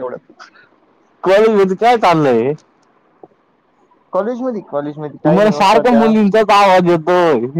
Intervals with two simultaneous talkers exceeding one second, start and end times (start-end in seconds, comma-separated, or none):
4.2-6.1